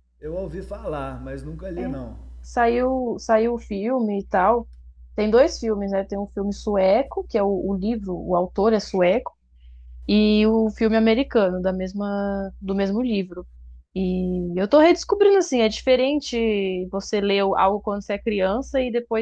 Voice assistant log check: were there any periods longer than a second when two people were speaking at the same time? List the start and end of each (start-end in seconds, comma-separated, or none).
none